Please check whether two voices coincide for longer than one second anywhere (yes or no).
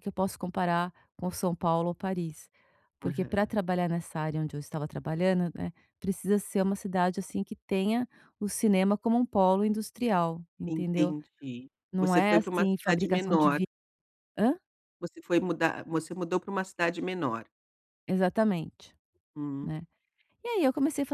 yes